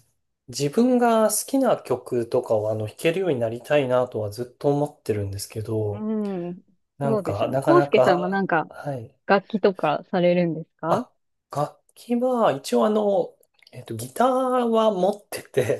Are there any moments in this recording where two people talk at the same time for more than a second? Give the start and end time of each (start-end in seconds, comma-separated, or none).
7.0-8.7